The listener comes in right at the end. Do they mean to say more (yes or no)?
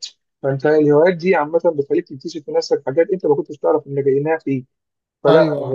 no